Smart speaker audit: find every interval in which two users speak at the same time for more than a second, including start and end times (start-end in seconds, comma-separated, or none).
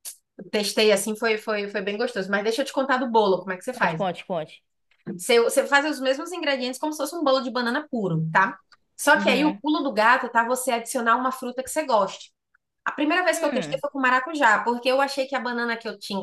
none